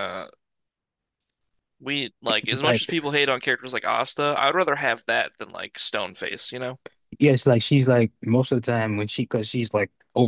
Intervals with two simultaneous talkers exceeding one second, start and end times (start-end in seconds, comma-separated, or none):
none